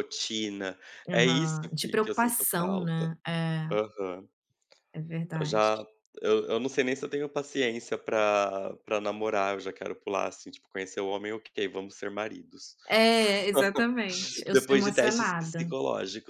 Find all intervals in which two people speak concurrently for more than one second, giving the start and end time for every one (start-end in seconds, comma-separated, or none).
1.1-3.1, 14.5-15.7